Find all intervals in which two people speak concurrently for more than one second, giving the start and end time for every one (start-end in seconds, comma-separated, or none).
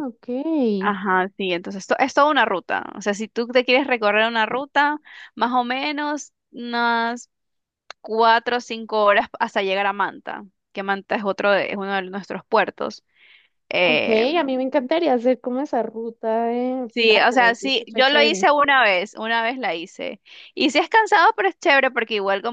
16.9-18.5